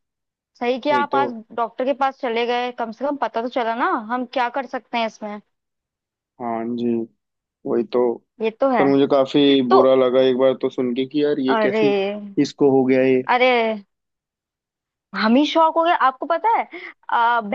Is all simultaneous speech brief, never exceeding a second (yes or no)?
yes